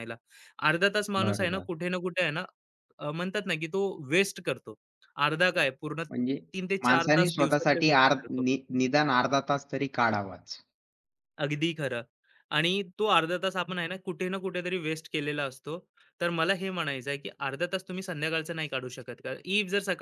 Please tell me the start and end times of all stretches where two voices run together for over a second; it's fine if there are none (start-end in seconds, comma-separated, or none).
6.8-8.4